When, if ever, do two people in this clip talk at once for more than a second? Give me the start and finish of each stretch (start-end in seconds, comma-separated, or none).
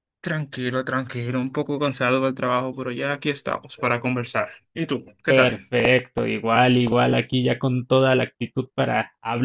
none